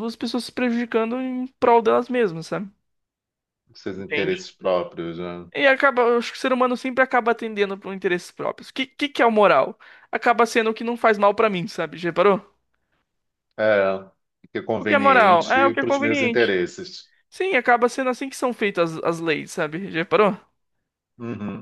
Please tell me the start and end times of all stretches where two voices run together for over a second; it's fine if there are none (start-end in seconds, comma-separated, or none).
14.8-16.5